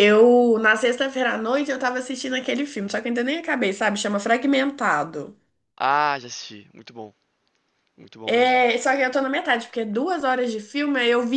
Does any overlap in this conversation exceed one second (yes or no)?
no